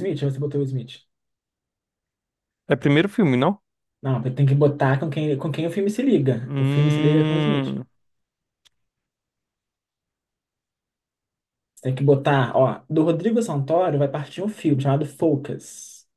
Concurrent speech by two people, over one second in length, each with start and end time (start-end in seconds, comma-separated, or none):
6.5-7.8